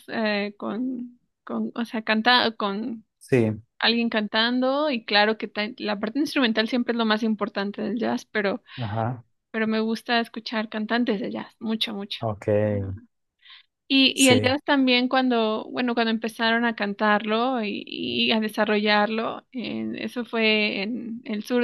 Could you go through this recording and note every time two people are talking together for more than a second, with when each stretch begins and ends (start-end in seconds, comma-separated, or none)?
none